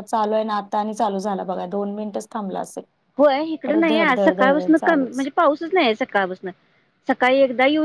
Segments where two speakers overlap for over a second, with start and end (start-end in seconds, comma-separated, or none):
3.6-5.3